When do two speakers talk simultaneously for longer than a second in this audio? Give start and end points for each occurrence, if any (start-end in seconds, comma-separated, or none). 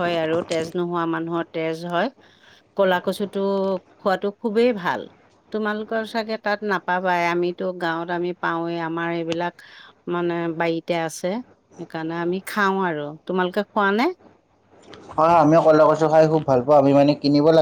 none